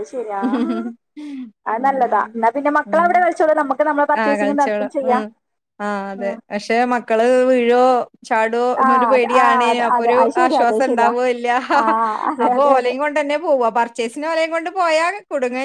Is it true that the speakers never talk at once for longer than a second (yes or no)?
no